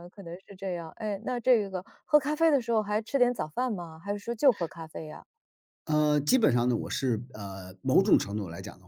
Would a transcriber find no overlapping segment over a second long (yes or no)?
yes